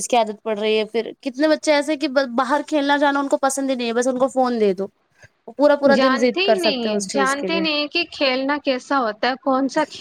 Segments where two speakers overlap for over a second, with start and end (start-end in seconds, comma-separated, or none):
6.0-7.6